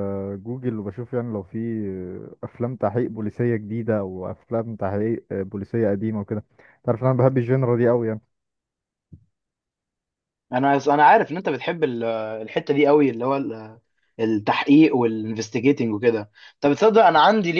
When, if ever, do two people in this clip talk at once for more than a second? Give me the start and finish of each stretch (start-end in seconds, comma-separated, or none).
none